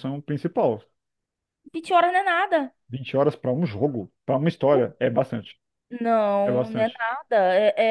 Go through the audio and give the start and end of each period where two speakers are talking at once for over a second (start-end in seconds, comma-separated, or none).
none